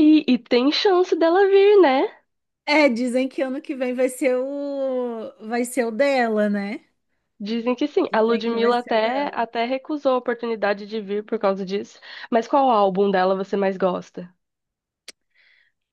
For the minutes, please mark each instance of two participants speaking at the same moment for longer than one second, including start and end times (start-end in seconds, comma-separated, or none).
8.1-9.4